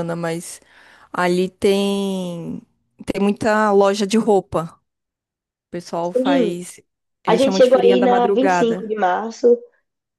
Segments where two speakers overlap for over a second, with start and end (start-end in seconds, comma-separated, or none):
7.2-8.9